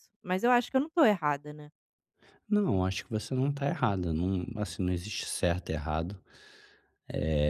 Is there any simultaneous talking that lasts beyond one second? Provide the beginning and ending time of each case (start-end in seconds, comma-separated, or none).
none